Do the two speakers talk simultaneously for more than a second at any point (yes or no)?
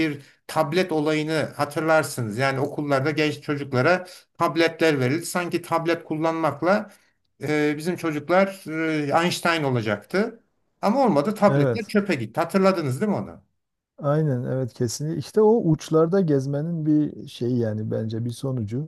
no